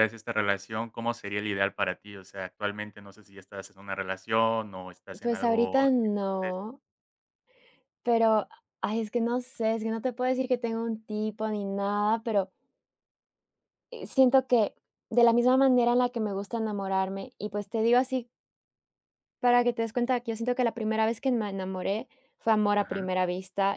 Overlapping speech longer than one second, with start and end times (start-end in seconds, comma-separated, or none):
5.2-6.8